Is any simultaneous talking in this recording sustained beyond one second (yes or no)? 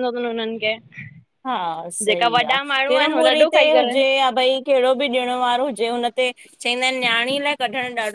yes